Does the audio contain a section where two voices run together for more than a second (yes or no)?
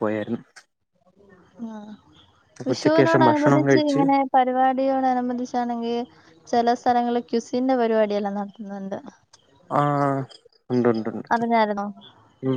yes